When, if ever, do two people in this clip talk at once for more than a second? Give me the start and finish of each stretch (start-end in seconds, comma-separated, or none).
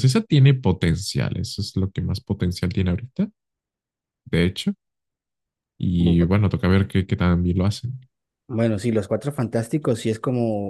none